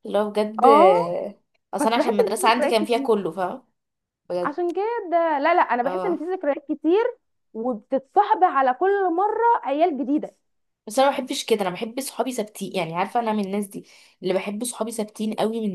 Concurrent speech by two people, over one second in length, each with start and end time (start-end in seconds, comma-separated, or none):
1.8-3.3